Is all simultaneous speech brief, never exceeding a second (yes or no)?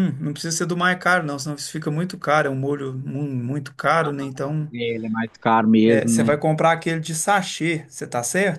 yes